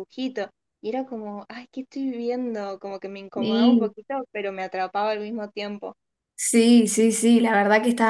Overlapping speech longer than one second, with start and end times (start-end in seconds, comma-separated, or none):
none